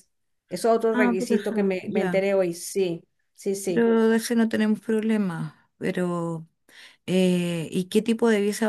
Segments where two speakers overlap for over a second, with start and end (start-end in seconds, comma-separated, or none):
0.9-2.3